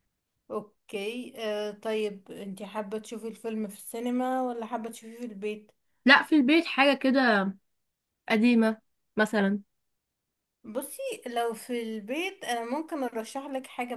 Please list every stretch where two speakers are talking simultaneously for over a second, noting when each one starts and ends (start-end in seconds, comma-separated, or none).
none